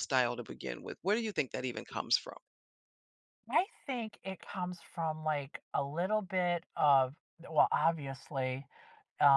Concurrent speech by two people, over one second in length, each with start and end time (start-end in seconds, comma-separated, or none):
none